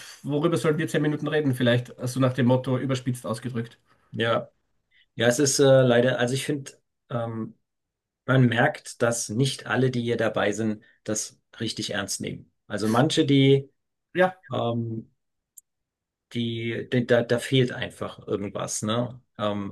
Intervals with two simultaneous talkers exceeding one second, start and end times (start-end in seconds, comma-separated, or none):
none